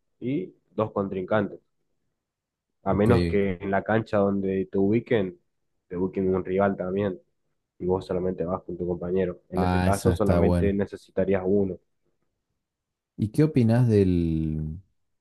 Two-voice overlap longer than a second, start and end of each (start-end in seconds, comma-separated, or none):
9.5-10.8